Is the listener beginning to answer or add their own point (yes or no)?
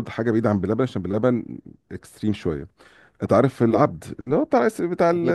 no